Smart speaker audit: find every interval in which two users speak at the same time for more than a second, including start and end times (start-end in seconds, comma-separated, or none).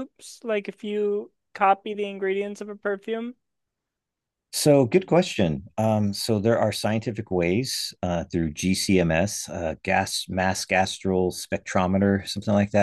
none